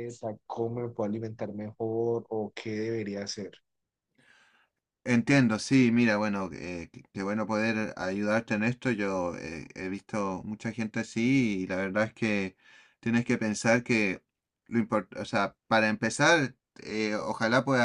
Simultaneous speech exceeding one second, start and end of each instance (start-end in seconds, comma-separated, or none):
none